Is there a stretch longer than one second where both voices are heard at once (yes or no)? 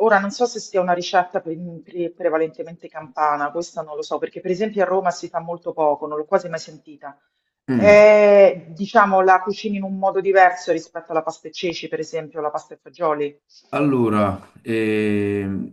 no